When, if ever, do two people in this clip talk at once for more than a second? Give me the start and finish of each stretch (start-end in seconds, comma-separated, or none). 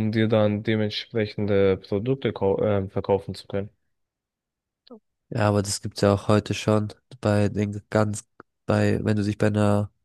none